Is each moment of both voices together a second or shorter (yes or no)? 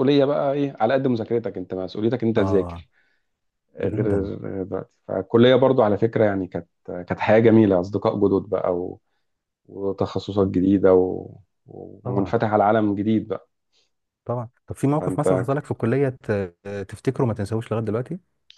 yes